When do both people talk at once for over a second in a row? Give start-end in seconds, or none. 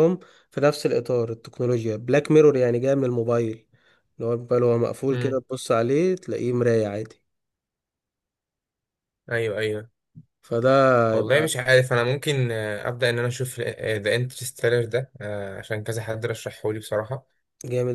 none